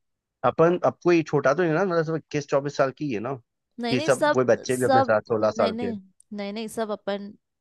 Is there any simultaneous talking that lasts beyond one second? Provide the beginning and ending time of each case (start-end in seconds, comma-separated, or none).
3.9-5.9